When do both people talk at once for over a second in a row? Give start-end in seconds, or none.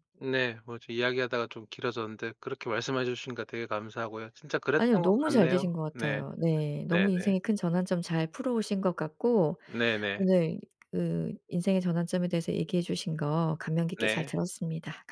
4.8-6.2